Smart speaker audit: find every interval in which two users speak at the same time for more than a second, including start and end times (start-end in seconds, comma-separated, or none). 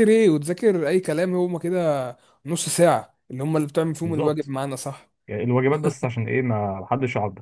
none